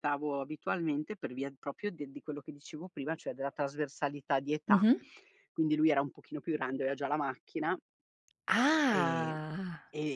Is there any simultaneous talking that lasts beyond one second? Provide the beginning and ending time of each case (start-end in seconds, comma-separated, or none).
none